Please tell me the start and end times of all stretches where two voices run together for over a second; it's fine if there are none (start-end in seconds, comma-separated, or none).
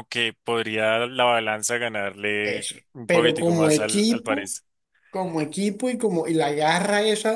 2.4-4.5